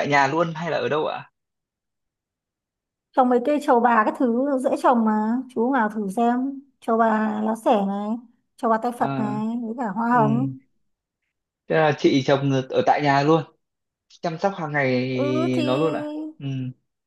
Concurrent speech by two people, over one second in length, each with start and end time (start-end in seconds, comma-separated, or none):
none